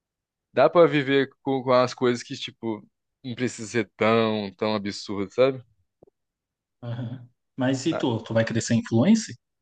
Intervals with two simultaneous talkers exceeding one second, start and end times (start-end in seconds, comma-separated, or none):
none